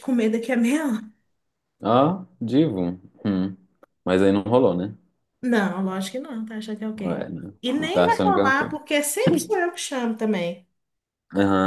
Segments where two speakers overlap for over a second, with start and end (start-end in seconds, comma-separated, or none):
7.0-8.7